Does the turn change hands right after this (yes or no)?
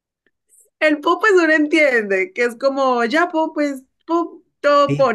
yes